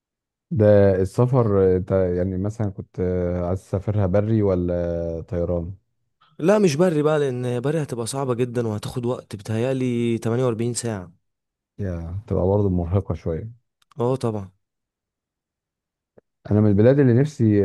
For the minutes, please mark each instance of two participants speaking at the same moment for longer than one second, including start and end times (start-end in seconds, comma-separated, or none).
none